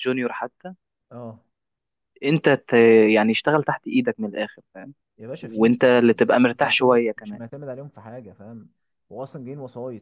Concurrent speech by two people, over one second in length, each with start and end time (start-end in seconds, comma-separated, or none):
5.4-7.4